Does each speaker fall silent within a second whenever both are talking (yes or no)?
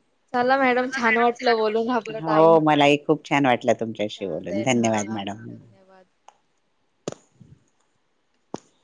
no